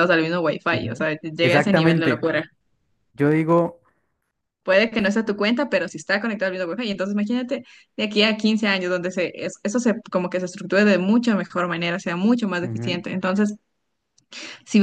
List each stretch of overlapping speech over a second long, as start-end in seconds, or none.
0.7-2.2